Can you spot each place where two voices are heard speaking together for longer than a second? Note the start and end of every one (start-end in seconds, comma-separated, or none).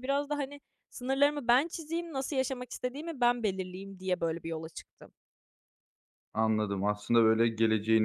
none